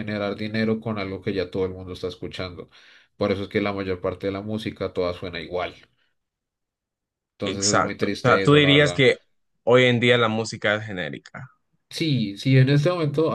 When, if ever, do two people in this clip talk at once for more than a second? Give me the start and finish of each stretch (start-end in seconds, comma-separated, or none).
7.4-9.0